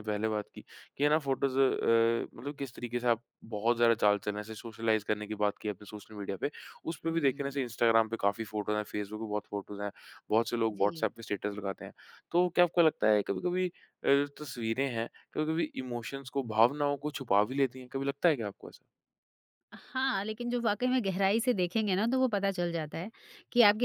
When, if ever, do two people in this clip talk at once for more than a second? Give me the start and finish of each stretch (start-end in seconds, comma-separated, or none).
none